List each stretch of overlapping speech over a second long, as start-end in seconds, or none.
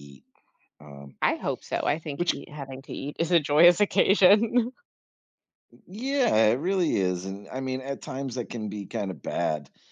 none